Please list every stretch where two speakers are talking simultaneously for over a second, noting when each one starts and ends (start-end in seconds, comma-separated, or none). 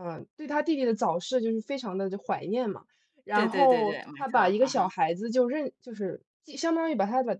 3.3-4.8